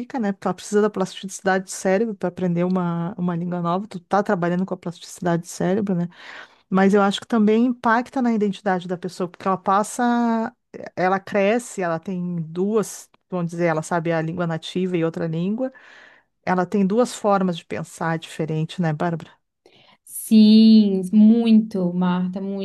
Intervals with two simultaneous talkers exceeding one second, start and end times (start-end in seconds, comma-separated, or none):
none